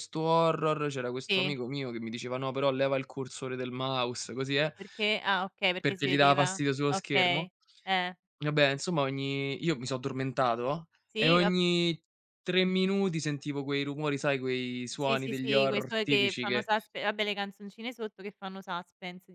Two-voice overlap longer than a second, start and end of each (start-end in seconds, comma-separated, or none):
5.8-7.5, 14.9-16.7